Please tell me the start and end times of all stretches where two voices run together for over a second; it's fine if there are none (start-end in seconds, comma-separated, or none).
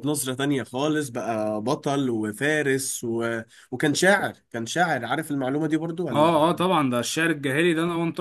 none